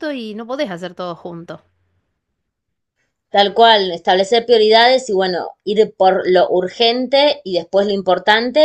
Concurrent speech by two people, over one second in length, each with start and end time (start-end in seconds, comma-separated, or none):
none